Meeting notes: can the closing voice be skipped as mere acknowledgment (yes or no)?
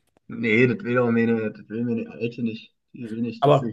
yes